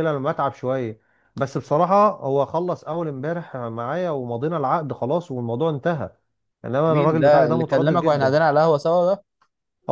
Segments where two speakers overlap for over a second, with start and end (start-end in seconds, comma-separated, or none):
6.9-8.3